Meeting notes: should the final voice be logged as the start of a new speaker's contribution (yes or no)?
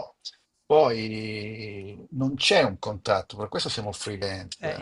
yes